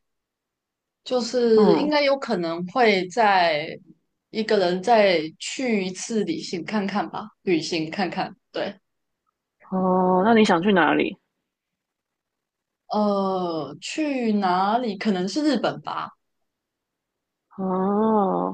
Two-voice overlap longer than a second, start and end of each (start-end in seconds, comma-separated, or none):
none